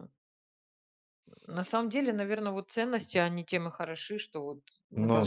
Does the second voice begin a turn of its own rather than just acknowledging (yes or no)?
no